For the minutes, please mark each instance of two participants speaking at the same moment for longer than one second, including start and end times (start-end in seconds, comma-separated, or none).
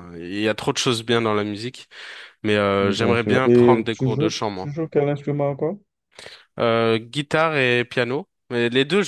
2.8-4.7